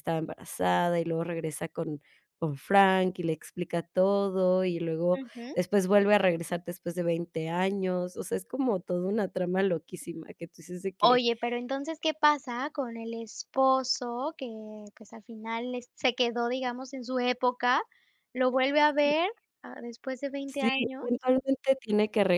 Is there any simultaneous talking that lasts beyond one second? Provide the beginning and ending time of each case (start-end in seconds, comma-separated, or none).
none